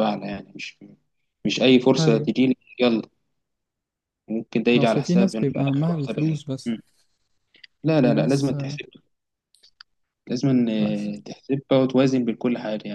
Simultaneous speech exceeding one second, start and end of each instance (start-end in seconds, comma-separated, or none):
4.8-6.8